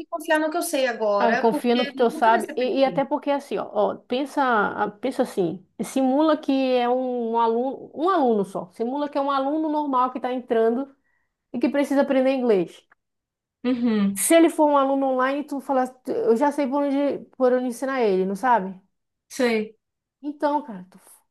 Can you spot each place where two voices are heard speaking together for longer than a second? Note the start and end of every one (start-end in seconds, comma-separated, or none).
1.2-3.1